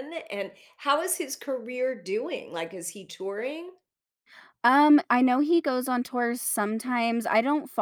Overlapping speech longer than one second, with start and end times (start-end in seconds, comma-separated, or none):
none